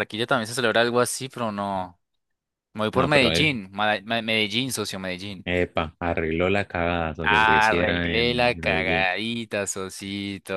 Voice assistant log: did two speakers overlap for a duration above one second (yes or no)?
yes